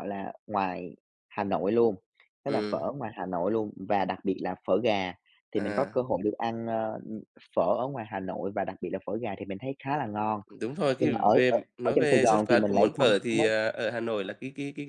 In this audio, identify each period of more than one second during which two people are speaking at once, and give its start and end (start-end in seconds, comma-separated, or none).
11.0-13.1